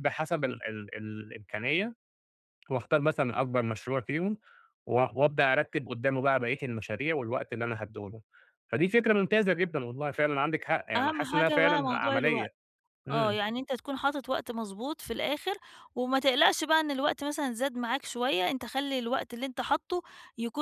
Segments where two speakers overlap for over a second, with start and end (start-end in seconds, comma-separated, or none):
10.9-12.5